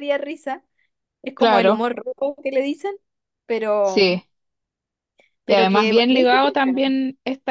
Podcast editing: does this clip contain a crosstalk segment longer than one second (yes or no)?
yes